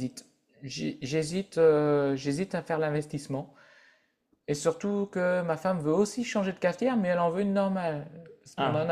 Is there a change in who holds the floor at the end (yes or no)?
no